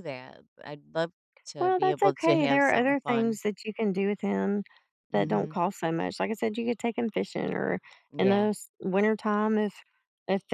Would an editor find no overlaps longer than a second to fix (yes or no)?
no